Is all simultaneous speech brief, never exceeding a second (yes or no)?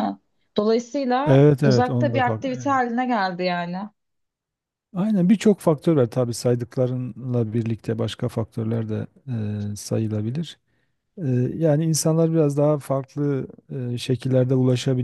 no